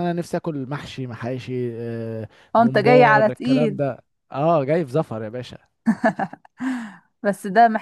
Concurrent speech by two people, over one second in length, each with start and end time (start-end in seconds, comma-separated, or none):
2.5-3.8